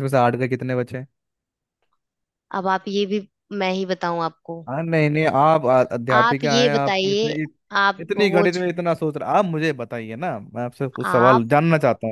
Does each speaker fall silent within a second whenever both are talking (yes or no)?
no